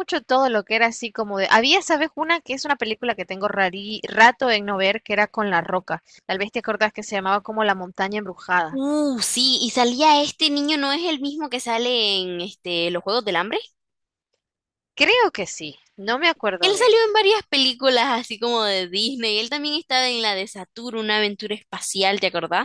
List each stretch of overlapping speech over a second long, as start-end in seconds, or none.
none